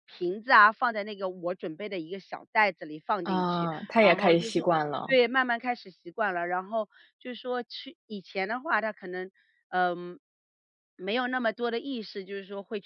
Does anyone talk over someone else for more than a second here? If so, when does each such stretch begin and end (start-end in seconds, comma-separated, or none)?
3.2-5.2